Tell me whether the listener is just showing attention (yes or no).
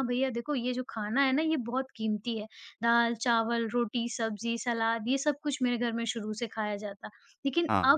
yes